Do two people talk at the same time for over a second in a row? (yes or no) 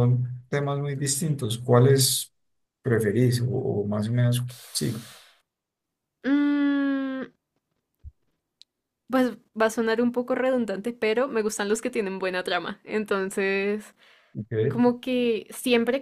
no